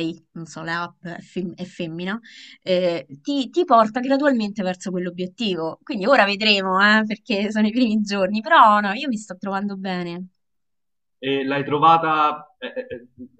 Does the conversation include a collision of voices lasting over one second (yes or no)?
no